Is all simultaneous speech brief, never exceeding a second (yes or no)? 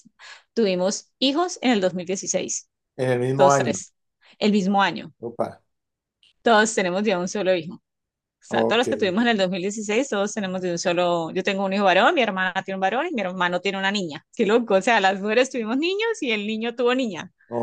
yes